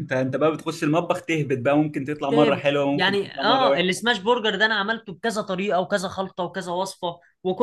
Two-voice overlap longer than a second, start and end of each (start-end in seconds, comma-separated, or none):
2.3-4.1